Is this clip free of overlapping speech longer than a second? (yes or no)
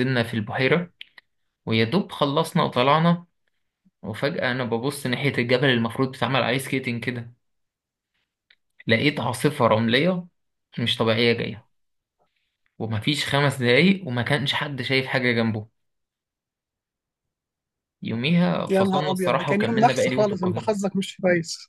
no